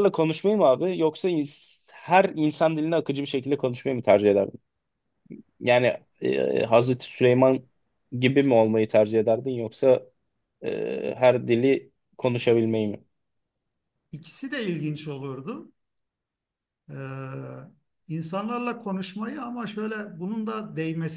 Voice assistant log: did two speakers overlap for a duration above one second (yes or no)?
no